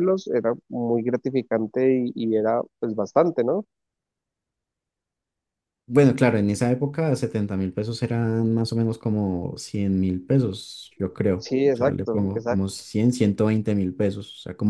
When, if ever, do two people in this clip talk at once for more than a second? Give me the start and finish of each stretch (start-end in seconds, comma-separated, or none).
11.4-12.7